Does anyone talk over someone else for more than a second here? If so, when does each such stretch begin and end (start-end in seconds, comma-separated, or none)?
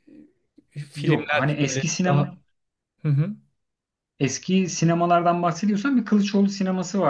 0.9-2.4